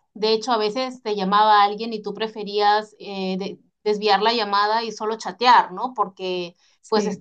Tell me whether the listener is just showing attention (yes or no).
yes